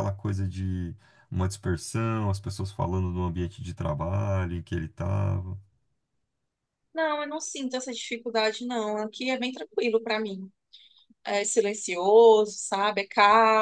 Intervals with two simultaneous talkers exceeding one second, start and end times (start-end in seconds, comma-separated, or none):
none